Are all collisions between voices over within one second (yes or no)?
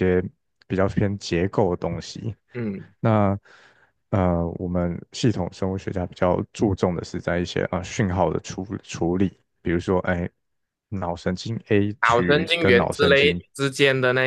no